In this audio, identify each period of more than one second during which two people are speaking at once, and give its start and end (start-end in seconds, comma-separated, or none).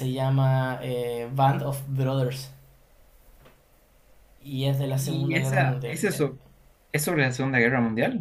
4.9-6.3